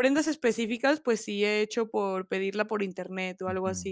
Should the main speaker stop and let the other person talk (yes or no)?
yes